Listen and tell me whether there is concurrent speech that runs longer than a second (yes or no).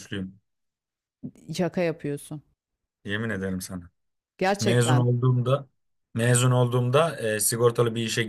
no